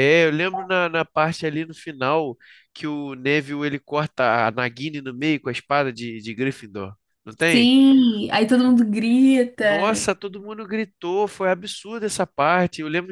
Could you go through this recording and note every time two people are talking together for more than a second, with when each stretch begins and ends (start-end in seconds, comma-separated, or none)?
none